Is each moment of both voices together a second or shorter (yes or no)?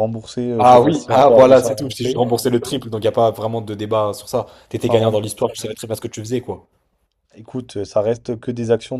no